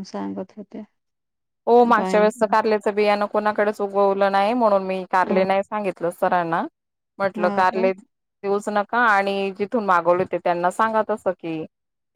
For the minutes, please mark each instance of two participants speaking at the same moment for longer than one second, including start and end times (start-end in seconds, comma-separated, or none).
none